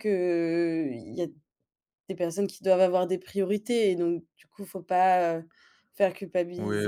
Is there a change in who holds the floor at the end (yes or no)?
yes